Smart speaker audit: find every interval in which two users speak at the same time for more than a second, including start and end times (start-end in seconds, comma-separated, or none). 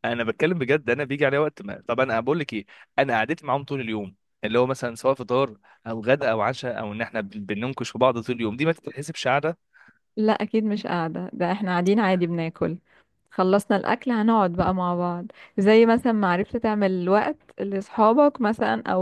none